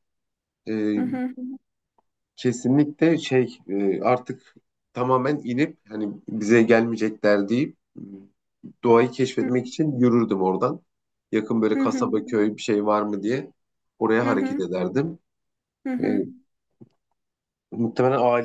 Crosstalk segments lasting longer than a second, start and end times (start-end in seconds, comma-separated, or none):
none